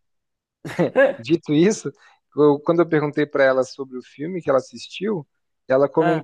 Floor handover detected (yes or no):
no